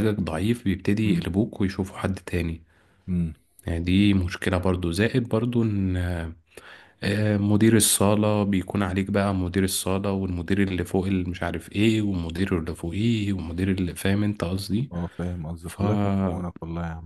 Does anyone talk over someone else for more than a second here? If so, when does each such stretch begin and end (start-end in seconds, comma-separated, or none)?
none